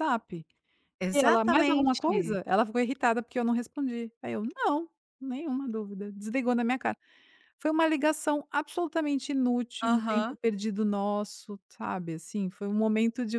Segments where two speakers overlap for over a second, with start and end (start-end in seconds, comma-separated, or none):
1.1-2.4